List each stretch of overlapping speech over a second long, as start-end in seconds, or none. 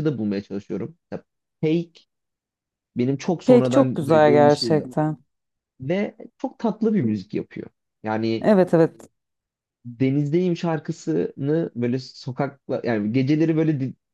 3.5-4.9